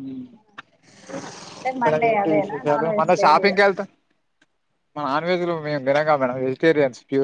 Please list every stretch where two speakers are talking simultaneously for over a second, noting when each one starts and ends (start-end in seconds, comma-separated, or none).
1.8-3.5